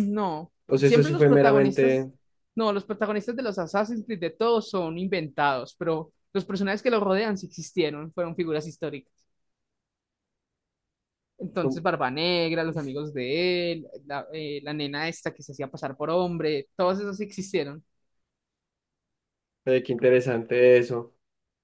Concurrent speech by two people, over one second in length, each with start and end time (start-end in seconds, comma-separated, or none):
0.7-2.1